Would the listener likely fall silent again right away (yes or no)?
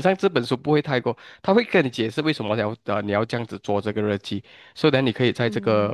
yes